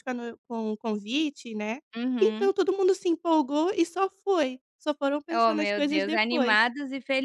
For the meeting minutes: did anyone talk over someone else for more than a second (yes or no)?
yes